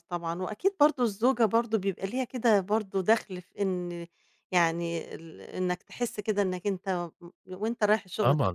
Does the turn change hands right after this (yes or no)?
yes